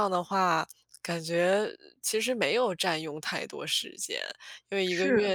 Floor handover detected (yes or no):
no